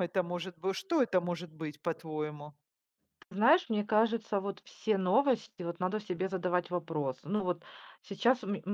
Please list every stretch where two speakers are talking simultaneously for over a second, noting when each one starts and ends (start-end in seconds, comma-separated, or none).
none